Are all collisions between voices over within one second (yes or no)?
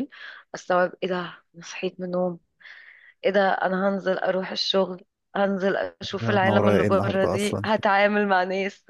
no